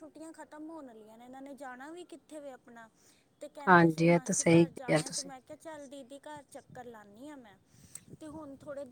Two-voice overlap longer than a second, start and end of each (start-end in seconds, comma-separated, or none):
3.7-5.3